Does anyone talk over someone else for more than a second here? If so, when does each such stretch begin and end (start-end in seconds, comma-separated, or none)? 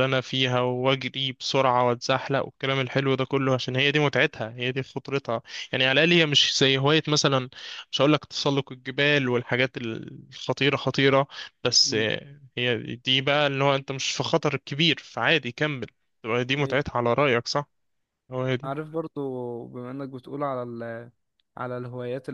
none